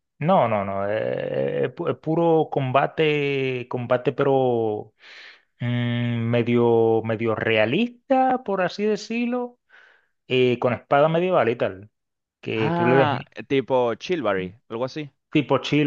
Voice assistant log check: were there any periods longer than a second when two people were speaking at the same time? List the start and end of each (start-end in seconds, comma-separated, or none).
none